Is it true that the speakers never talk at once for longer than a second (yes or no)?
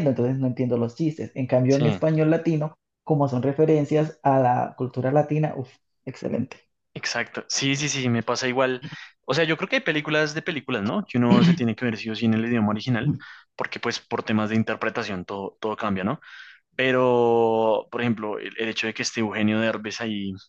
yes